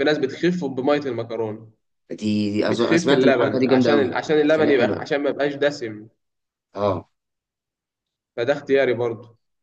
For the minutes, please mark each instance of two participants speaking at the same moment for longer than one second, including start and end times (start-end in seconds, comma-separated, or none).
2.7-5.0